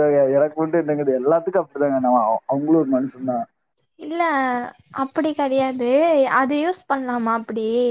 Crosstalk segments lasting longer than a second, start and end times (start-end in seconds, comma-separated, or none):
none